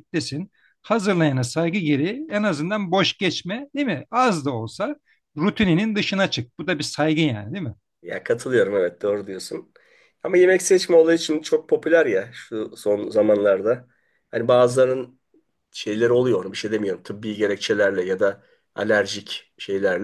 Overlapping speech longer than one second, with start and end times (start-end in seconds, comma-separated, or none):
none